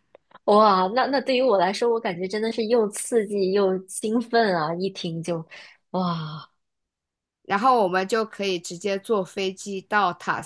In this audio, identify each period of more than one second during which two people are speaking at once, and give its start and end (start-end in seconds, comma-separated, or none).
none